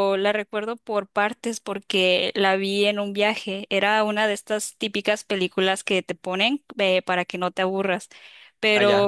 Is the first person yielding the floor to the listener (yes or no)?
no